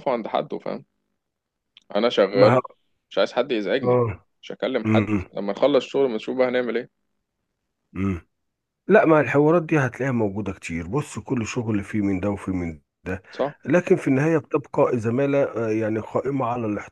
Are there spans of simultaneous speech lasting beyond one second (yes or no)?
no